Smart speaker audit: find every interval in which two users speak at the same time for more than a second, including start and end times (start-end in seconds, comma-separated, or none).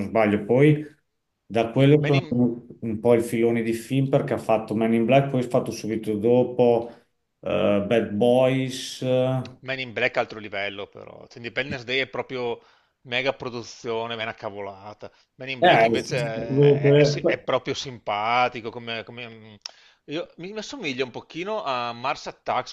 15.6-17.5